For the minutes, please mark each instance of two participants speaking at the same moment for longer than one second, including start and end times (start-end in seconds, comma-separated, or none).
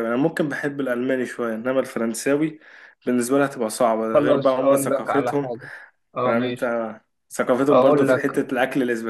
4.1-5.5